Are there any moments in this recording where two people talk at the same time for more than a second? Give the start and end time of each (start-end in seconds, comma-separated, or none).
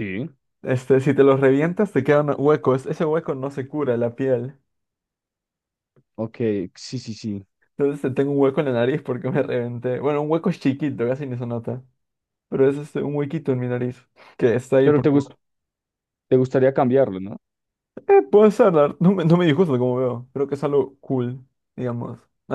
none